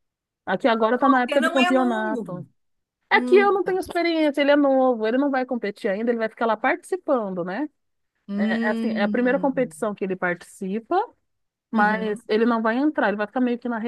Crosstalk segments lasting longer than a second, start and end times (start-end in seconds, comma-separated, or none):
1.2-2.5, 8.4-9.7